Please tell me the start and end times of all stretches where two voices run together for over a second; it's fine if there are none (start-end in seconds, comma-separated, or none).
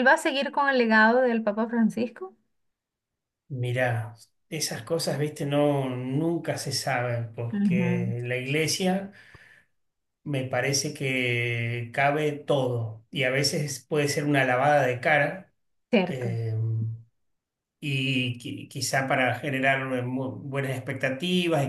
none